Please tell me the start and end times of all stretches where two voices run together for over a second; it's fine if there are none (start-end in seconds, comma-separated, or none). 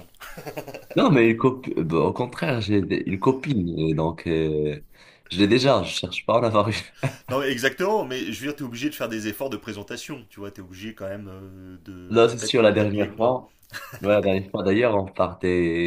12.1-13.4